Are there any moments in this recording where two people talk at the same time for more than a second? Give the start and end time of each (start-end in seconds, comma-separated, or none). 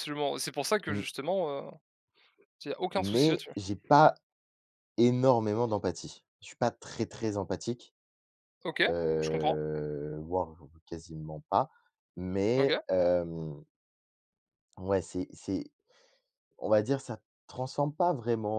none